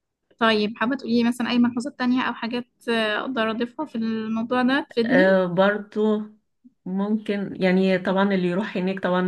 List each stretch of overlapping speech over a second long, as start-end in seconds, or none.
none